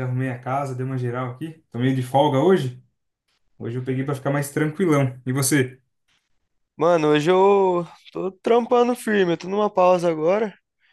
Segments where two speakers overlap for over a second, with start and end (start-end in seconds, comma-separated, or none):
none